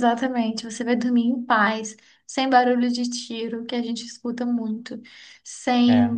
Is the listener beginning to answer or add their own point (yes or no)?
no